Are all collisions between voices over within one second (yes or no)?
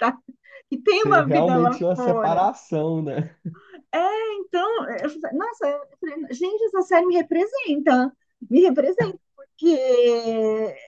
no